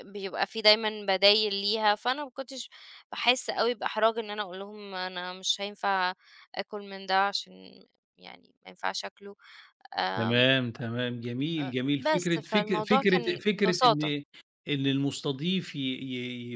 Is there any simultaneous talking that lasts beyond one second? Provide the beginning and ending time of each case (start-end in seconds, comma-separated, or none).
11.6-14.1